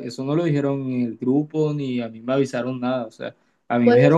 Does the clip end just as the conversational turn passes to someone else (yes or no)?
no